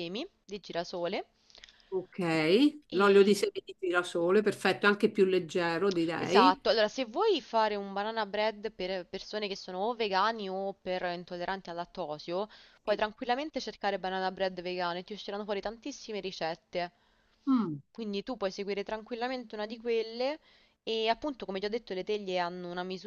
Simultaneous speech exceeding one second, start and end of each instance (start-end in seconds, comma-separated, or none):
none